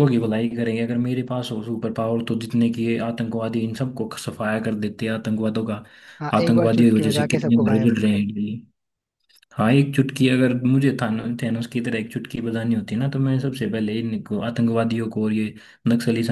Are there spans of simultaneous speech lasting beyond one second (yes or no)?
yes